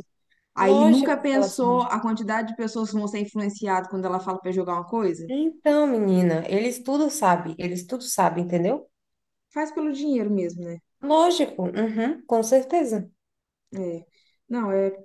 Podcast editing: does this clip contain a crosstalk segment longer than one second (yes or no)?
yes